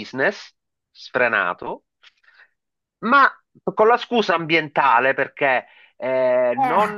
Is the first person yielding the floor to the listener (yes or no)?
no